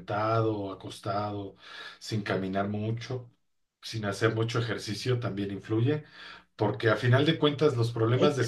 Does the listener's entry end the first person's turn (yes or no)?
no